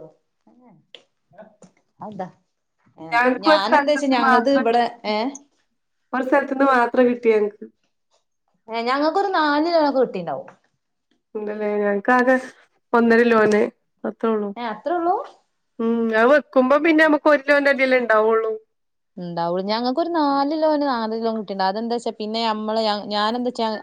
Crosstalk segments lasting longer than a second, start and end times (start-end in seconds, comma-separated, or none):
3.1-4.9